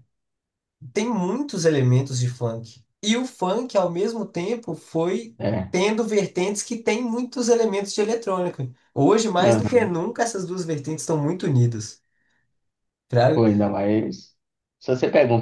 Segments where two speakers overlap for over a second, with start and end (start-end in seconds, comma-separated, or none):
none